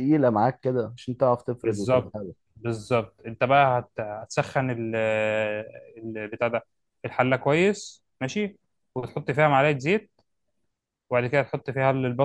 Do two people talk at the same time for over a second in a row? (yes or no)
no